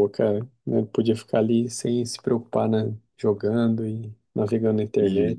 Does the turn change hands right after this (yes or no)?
yes